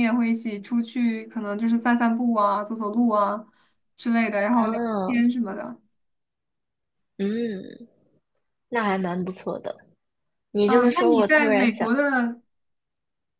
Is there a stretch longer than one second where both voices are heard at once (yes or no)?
yes